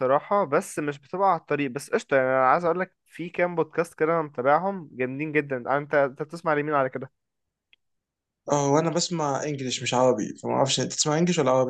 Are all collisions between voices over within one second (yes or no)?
yes